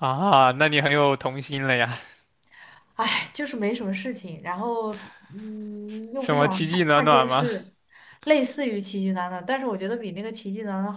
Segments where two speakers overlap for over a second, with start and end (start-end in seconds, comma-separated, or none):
6.2-7.5